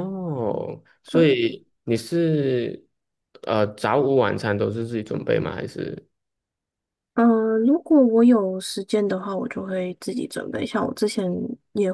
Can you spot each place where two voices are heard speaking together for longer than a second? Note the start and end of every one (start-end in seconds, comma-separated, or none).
none